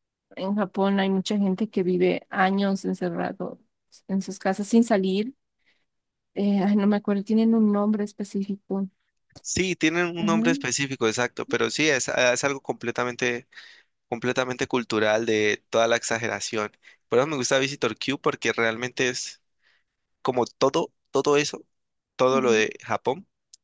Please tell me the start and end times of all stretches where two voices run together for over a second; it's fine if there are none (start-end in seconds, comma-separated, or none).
none